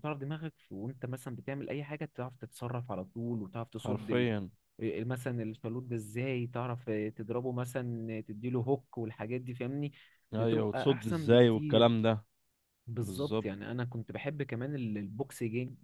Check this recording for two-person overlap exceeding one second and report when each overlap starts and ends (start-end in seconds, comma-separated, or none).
10.3-11.9